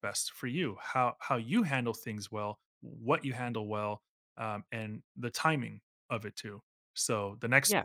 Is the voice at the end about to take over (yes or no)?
no